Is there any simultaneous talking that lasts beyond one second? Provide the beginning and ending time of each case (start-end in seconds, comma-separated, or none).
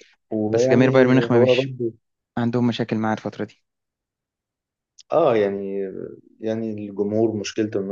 0.5-1.7